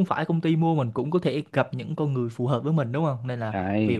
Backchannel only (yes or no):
yes